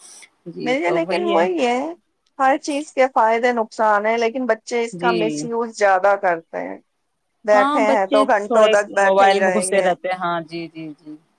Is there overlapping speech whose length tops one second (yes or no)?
yes